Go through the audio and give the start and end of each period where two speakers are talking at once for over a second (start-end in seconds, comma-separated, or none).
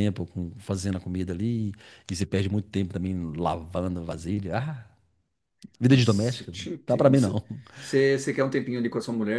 5.9-7.4